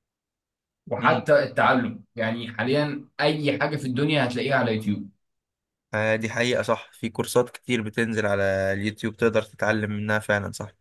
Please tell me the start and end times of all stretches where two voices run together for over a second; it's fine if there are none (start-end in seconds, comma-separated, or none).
none